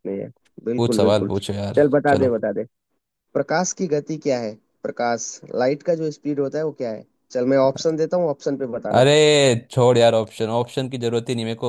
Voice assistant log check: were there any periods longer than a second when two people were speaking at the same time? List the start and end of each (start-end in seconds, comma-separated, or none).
0.8-2.3